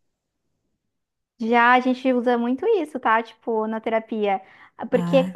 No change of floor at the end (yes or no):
yes